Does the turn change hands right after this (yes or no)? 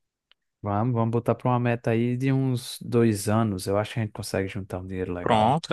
yes